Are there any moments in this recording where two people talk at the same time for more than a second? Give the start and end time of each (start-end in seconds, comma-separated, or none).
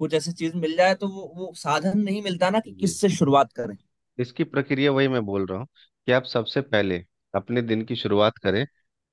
none